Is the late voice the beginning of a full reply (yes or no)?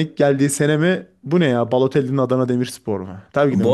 yes